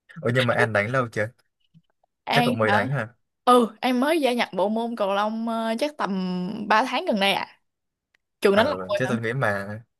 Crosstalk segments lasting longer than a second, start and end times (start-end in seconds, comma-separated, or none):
none